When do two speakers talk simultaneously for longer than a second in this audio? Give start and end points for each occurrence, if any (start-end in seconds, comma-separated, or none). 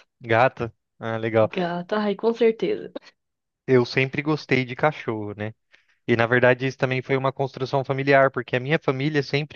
none